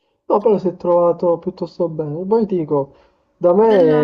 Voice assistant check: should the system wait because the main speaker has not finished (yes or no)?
yes